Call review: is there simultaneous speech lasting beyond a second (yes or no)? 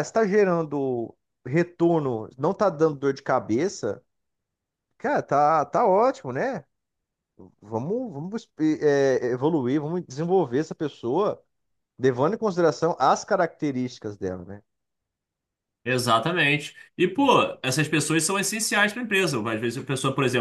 no